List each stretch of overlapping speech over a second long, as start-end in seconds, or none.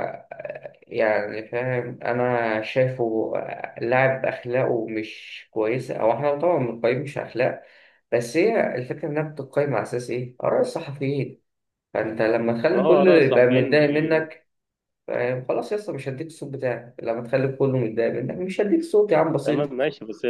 12.7-14.3